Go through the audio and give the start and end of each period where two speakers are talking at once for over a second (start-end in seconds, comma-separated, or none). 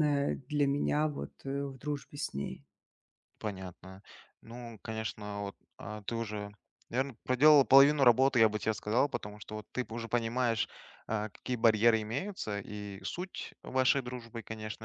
none